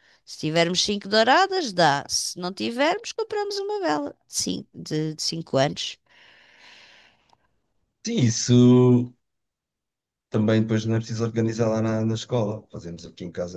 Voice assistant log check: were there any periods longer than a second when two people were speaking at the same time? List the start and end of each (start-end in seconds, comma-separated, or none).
none